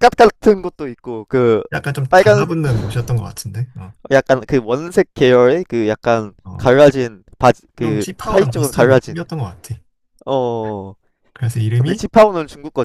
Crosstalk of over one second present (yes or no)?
yes